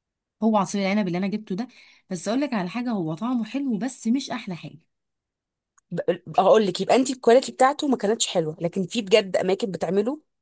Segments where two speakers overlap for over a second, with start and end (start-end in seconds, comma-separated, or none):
none